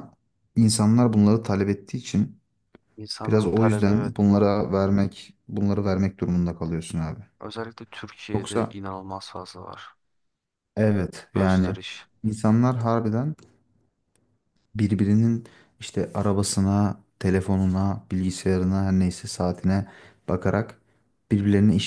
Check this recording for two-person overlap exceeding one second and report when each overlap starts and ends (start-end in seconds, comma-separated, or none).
3.2-4.5